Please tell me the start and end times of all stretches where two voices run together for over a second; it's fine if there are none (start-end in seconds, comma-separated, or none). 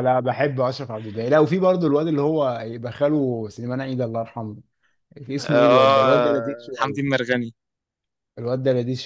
5.4-7.2